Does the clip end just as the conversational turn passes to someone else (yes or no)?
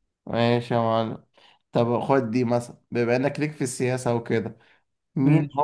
no